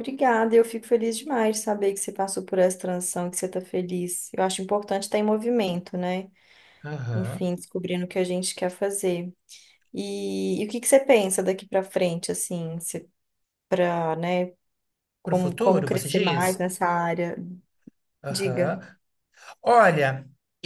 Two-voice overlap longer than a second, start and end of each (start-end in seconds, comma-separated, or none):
15.2-16.6